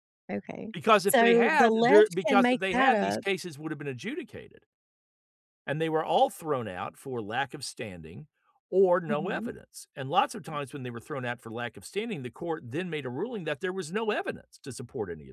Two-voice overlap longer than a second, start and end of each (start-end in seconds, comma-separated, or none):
0.7-3.2